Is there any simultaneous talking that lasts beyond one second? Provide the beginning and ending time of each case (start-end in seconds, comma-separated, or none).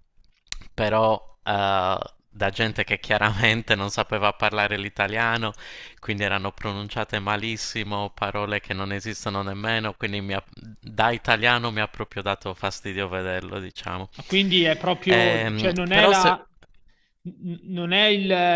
15.1-16.3